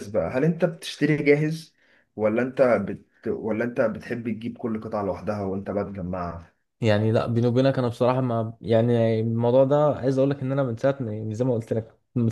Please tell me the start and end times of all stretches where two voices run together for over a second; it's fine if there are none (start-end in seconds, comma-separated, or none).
none